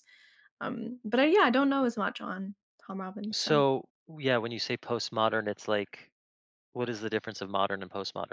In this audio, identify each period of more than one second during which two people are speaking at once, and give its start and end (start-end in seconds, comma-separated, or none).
none